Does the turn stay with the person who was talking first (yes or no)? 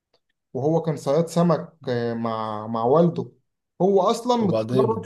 yes